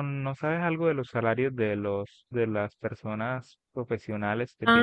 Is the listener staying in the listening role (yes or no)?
no